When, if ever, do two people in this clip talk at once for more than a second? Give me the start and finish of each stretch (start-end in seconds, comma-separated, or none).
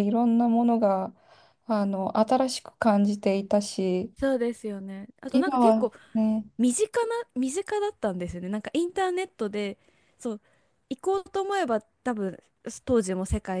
none